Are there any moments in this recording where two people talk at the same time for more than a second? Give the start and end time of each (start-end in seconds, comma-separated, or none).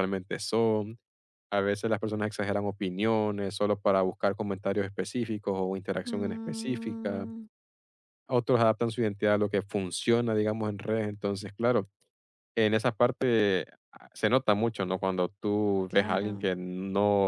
6.0-7.3